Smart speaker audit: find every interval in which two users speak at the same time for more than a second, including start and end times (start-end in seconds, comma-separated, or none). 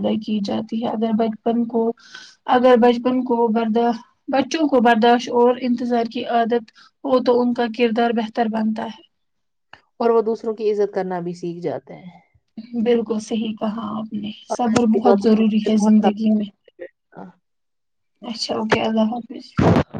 14.5-16.2